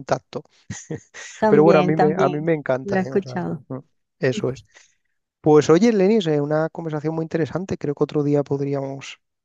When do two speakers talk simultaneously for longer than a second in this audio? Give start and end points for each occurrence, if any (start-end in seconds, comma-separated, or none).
1.5-3.6